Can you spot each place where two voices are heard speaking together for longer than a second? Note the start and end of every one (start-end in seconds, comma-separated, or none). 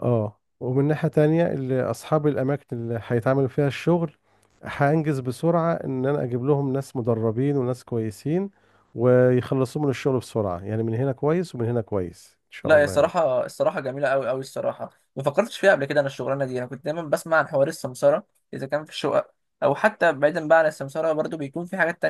none